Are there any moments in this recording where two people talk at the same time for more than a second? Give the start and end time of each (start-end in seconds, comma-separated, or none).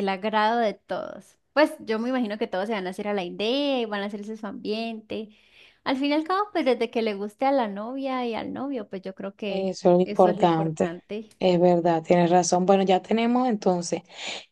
9.5-10.9